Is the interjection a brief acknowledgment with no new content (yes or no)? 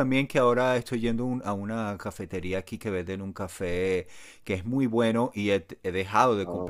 yes